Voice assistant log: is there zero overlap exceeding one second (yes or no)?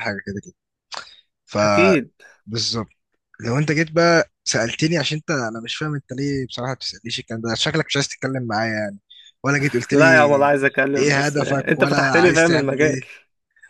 no